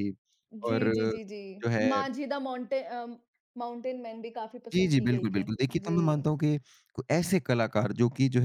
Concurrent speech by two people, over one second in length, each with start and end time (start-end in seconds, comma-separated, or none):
4.7-6.3